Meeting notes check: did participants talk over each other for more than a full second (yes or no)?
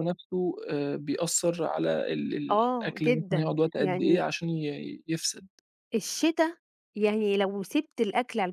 yes